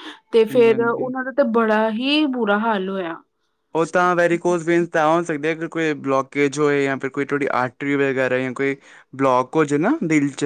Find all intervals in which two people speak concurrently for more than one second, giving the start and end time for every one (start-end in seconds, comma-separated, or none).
none